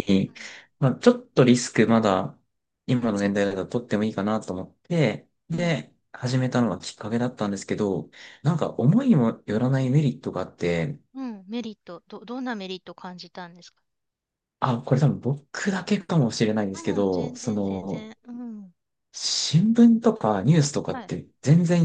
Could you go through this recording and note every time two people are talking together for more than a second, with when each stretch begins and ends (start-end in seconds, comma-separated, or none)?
16.7-18.1